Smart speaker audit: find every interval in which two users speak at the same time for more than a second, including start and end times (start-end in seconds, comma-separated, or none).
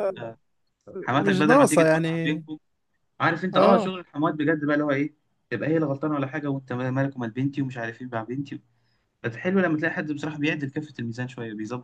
1.1-2.4